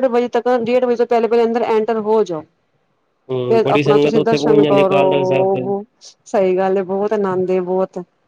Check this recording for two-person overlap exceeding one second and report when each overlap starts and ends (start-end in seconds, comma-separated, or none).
3.5-5.6